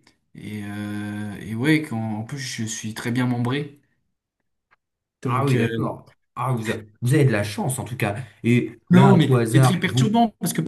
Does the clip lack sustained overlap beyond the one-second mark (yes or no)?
no